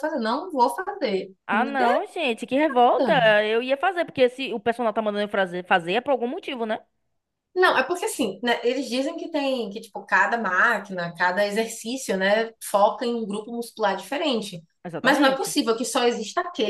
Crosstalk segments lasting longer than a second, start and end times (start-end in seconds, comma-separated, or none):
none